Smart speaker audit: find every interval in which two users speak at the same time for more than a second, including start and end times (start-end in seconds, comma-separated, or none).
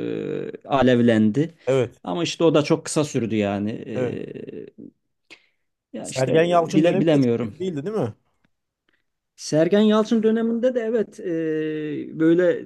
6.0-7.5